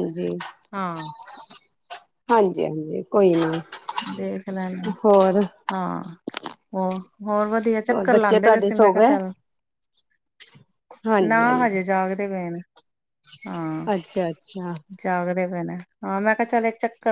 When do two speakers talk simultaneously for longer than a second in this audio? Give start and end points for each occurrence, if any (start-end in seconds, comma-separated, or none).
7.7-9.2